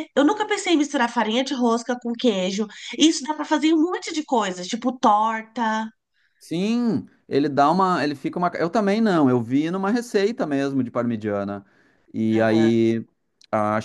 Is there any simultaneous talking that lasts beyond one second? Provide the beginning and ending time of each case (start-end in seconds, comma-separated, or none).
none